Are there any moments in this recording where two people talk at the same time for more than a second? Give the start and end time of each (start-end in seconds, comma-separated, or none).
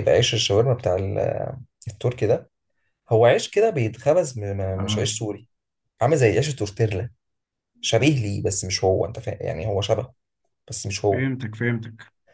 none